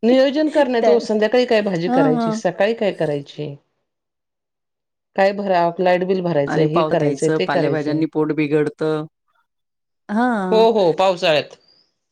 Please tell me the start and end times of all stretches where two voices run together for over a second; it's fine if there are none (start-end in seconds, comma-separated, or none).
6.5-8.0